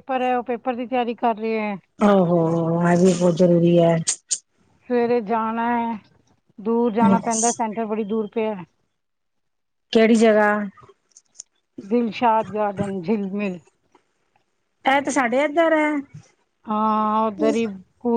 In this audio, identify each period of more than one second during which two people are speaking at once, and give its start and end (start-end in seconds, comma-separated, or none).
none